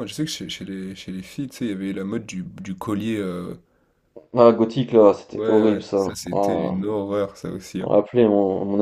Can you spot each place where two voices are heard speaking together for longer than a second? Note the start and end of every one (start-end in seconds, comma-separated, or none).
5.3-6.7